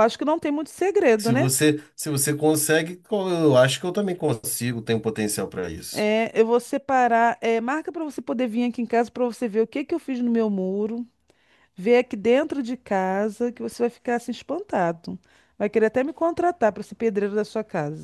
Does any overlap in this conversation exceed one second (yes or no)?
no